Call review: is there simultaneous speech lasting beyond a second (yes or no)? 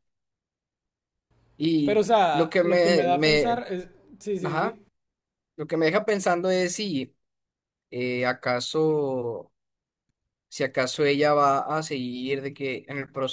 yes